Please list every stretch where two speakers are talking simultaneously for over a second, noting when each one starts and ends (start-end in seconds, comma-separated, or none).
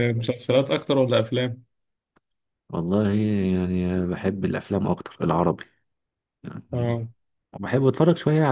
none